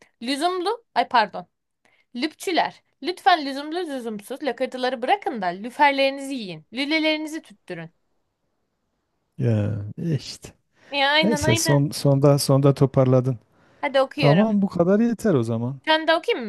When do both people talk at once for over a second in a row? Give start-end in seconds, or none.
none